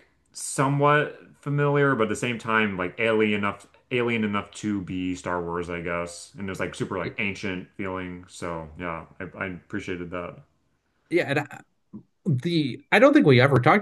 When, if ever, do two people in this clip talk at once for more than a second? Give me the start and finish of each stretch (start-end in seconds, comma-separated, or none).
none